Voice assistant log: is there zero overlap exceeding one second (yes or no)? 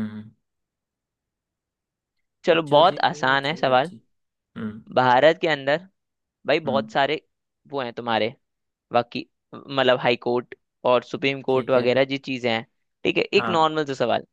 no